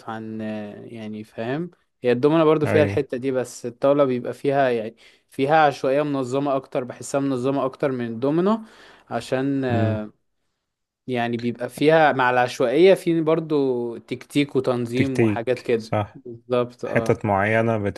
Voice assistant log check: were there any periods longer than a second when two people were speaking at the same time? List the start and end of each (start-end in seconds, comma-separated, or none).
14.9-16.2